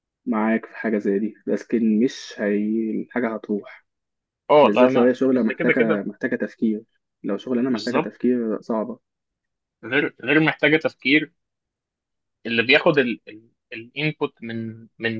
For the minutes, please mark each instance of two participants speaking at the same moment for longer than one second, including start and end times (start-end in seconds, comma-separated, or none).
4.6-6.0